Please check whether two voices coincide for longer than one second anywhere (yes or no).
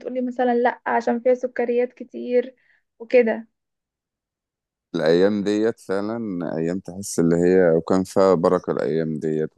no